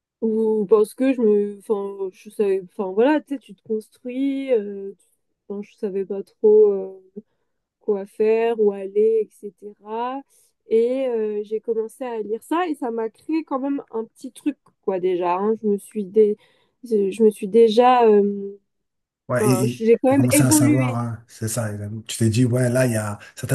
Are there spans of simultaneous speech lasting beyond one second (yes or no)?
yes